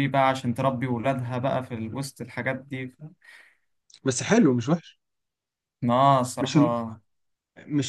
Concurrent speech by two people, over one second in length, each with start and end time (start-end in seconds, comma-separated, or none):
none